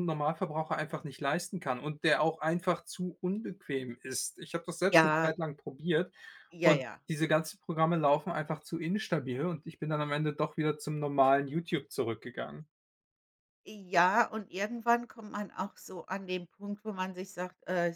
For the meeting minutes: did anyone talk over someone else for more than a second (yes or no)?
no